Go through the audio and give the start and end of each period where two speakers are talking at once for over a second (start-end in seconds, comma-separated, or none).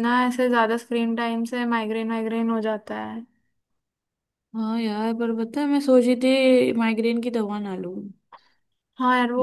none